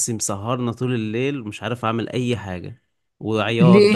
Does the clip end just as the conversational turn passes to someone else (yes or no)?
no